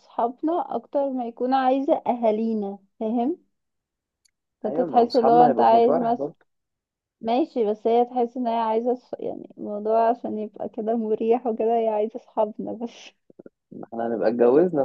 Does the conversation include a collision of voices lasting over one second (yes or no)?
yes